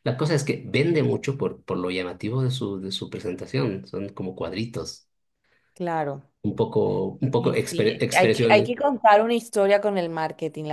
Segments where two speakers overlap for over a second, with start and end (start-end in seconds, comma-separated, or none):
7.4-8.7